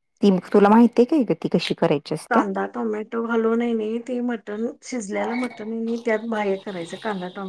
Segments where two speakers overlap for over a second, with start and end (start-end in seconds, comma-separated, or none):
none